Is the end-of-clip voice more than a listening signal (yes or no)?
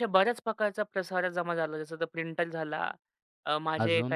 no